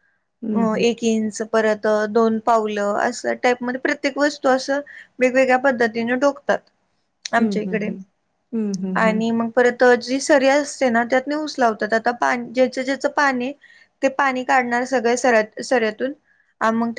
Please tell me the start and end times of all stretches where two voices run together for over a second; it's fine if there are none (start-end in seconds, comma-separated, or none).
none